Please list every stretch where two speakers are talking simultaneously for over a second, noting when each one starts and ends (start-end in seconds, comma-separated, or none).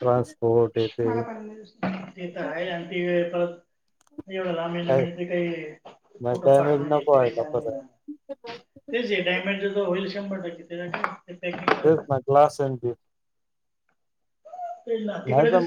6.3-7.8